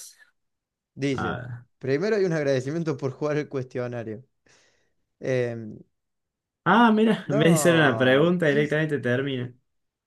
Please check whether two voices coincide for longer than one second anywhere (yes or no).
yes